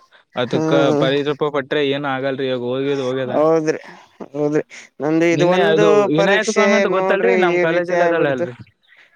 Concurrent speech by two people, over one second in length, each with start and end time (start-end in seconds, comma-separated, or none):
5.4-8.4